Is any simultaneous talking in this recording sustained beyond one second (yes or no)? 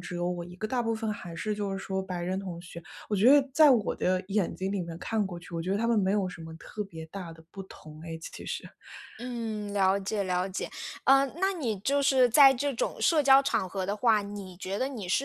no